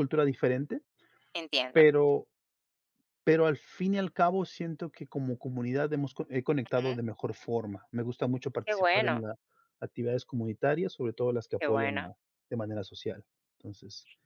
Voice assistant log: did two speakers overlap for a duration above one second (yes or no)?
no